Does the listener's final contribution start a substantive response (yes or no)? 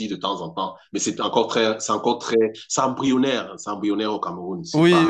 yes